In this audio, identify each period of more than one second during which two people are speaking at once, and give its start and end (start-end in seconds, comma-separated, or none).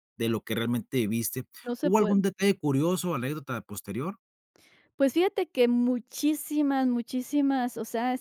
none